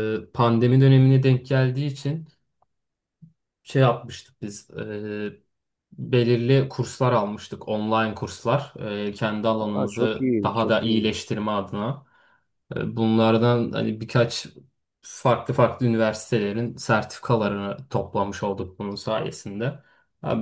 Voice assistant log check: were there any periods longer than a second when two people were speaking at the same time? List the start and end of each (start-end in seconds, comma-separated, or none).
9.6-11.1